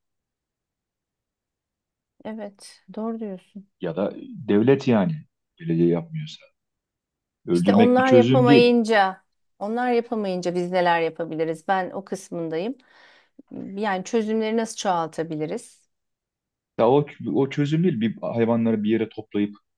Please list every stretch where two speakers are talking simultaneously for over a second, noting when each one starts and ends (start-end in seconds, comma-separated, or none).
7.5-8.7